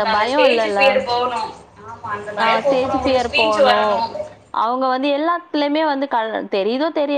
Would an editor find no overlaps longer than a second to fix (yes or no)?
no